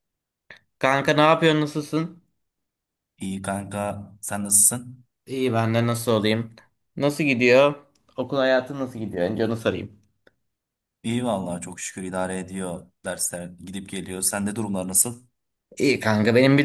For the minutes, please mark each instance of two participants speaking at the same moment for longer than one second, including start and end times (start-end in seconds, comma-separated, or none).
none